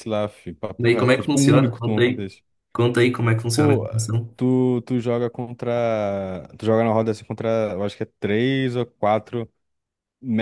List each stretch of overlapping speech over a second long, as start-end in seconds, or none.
0.8-2.3